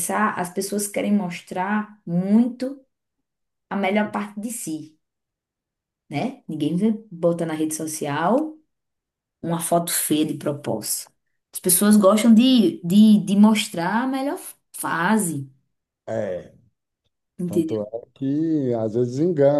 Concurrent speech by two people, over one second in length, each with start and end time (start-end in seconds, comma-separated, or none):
none